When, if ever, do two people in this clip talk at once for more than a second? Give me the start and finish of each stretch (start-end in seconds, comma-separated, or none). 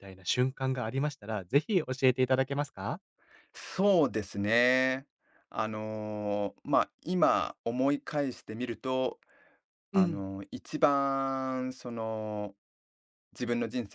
none